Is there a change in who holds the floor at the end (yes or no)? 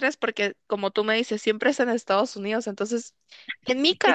no